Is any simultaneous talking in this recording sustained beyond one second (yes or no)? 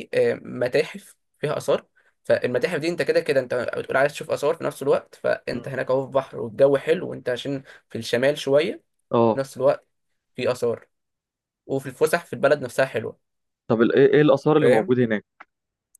no